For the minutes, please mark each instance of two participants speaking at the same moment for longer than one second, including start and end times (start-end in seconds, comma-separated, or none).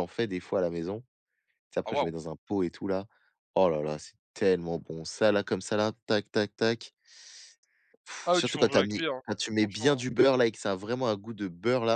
8.3-10.1